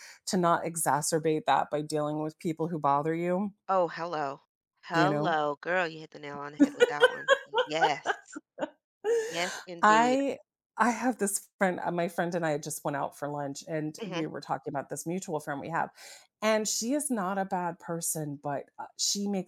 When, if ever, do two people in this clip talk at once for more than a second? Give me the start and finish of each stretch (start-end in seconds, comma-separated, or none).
none